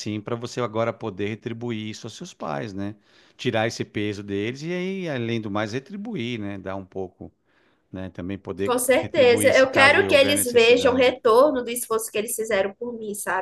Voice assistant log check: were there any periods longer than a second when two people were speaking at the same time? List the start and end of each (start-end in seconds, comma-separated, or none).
8.6-11.1